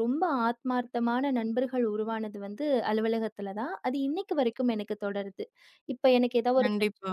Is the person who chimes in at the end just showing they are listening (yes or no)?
yes